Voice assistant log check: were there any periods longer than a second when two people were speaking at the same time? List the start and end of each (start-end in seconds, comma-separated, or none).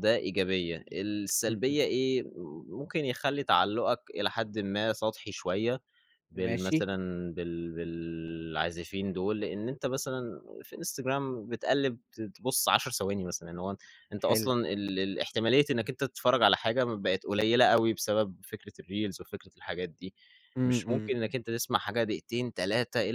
none